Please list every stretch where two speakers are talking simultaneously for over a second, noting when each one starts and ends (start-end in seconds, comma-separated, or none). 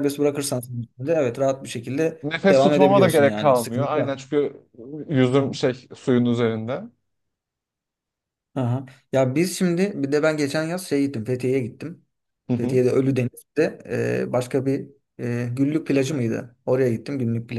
2.2-4.2